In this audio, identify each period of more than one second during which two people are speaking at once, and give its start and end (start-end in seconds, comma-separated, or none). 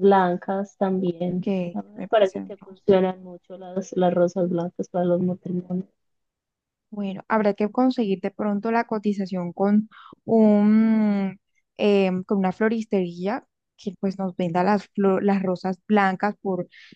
1.4-2.9